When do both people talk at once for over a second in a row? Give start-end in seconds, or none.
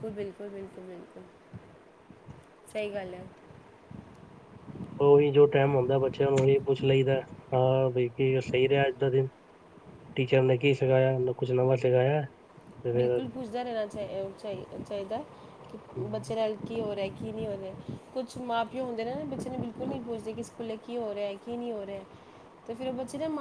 none